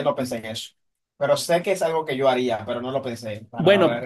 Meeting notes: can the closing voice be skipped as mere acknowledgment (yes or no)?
no